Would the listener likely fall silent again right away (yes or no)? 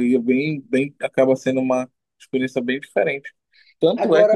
yes